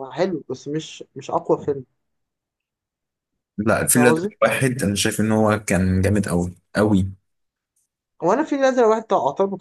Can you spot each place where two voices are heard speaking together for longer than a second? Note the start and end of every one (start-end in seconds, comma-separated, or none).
none